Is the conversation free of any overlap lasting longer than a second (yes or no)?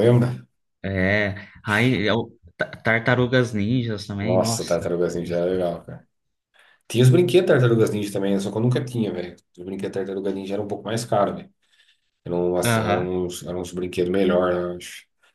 yes